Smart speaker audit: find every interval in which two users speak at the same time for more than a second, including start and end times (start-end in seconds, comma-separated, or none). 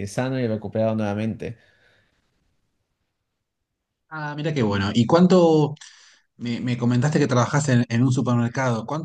none